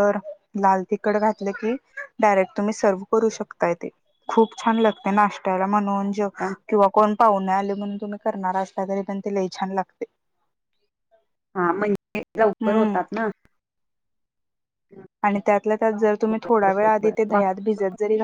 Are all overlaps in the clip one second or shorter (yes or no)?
yes